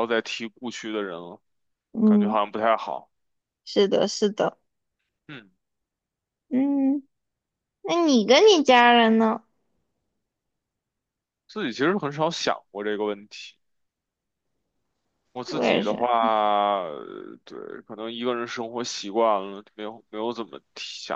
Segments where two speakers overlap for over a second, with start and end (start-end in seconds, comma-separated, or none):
none